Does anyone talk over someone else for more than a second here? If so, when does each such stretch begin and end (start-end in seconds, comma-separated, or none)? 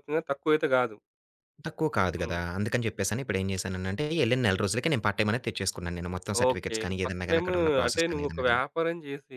6.5-8.6